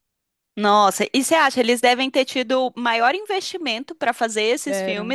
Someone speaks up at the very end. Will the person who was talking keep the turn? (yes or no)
yes